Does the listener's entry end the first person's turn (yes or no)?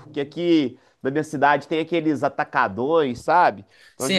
yes